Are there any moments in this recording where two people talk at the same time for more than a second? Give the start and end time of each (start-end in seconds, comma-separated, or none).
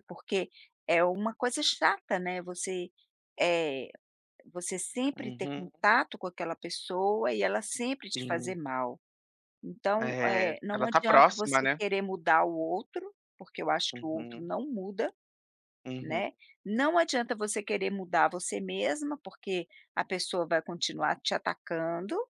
10.0-11.8